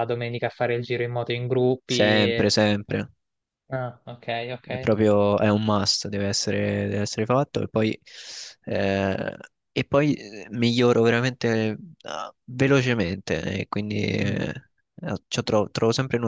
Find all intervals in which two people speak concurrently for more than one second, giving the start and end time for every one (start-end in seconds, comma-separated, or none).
none